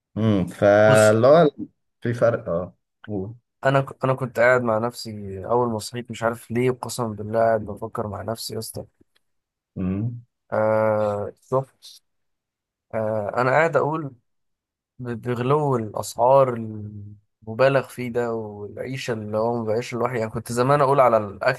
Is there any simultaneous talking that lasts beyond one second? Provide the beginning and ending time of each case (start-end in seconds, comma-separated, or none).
none